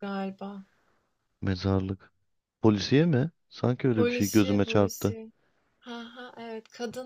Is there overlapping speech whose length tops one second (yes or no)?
yes